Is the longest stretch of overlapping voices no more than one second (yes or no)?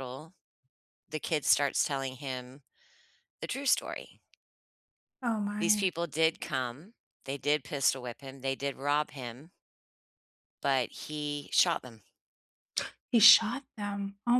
yes